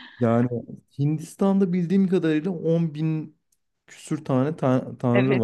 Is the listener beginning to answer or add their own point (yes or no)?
yes